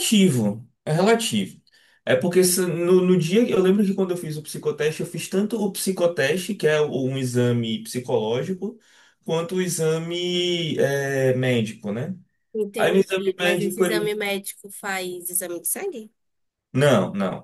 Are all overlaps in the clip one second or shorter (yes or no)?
no